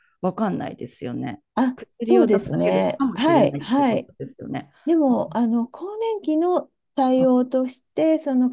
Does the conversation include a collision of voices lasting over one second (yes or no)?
yes